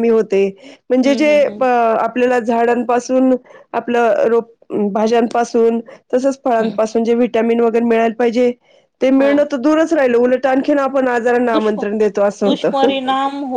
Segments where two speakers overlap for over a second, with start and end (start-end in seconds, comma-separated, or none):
none